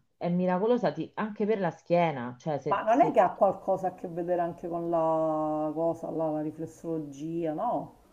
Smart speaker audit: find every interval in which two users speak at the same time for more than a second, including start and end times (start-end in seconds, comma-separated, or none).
none